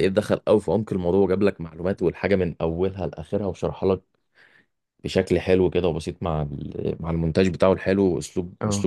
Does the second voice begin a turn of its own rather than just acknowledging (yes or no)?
no